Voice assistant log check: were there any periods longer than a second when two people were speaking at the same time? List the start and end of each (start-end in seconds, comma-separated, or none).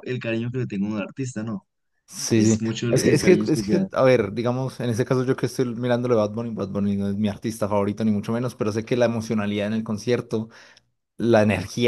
2.3-3.9